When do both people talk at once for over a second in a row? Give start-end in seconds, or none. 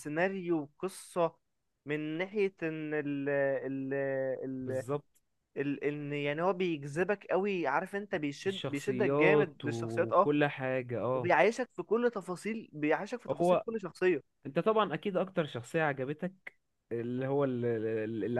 8.5-10.3